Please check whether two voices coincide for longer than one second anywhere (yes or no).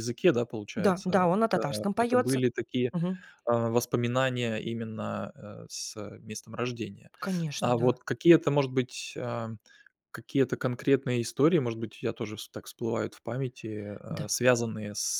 yes